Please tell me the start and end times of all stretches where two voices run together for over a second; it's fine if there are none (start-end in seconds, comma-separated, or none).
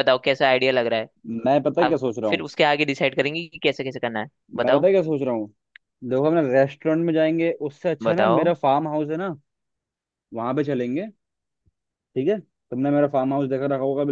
none